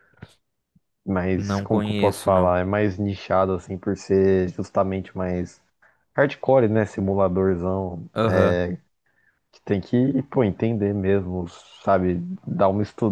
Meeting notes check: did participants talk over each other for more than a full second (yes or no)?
yes